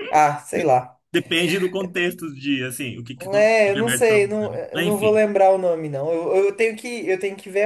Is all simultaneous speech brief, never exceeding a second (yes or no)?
no